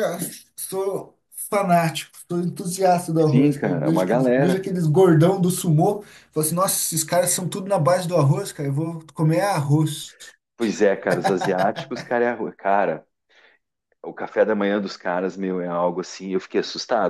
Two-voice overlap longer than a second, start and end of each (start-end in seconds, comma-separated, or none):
3.3-4.7